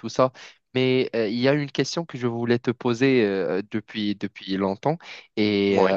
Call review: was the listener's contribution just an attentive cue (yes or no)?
yes